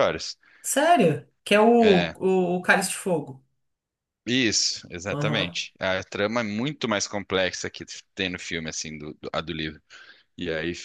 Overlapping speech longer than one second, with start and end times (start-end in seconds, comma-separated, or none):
none